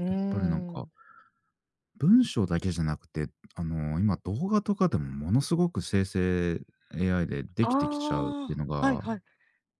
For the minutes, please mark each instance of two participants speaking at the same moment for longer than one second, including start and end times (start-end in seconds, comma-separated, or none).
7.6-9.0